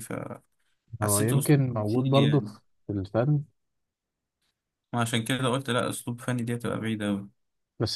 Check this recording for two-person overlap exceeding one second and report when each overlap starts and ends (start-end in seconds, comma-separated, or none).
1.0-2.4